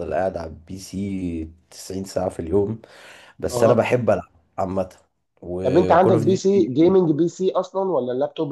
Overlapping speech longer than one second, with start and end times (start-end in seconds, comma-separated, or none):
5.6-7.0